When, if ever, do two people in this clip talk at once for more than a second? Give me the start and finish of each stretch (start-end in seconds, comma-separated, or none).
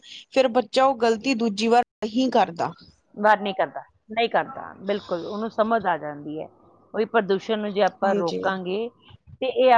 none